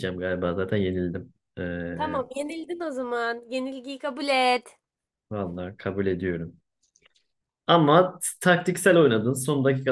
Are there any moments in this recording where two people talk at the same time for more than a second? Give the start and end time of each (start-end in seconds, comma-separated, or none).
none